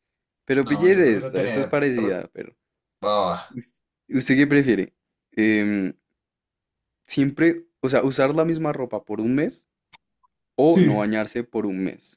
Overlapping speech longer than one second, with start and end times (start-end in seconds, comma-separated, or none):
0.6-2.2